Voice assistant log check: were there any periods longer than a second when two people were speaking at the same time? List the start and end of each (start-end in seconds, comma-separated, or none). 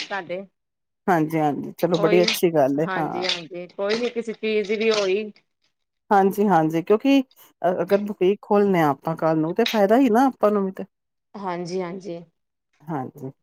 none